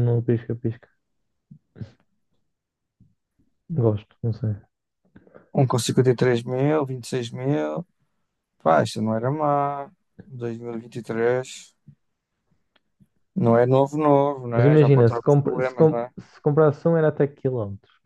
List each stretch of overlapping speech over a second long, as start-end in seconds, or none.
14.5-16.1